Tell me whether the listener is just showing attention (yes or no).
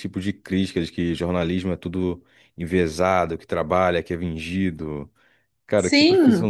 no